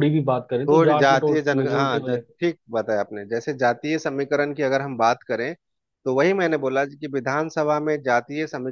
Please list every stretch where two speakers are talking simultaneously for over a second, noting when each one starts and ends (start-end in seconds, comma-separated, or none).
0.7-2.2